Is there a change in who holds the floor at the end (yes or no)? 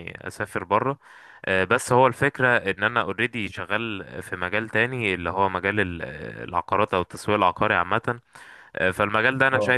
no